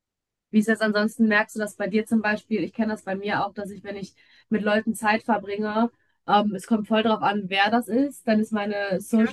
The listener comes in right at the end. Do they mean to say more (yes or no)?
no